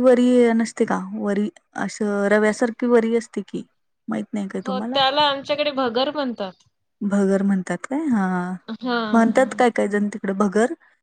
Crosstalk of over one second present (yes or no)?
no